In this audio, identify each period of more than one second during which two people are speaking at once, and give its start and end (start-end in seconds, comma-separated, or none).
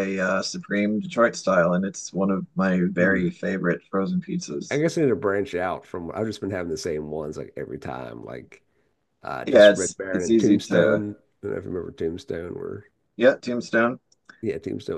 9.4-11.0